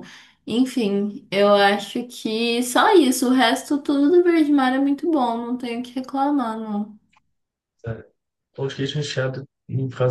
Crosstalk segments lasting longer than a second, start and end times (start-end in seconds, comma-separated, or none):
none